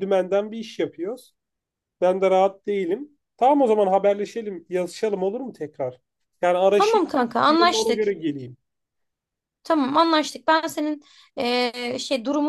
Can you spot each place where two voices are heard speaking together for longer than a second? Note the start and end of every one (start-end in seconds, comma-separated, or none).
none